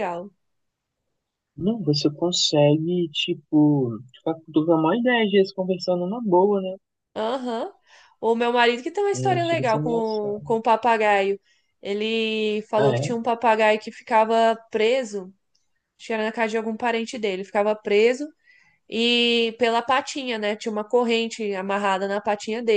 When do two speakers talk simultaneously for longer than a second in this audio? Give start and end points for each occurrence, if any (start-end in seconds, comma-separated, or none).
9.1-10.5